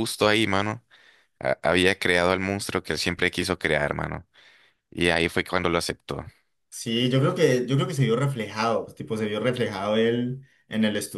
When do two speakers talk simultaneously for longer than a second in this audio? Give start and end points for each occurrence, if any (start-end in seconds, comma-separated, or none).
none